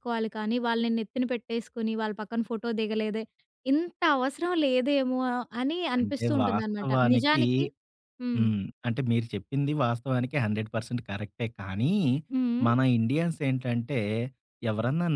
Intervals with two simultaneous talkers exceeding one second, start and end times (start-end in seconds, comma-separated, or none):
6.0-7.4